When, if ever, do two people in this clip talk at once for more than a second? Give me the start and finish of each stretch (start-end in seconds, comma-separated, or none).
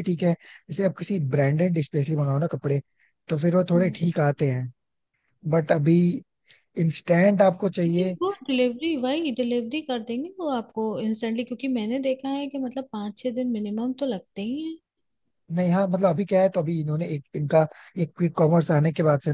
none